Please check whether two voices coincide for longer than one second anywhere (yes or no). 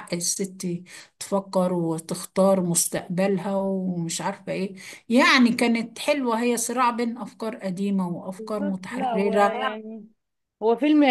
yes